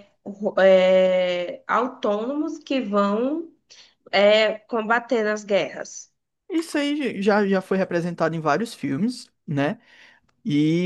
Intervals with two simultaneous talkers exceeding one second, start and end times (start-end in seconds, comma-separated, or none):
none